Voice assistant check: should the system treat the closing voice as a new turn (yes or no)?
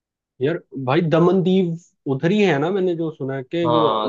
yes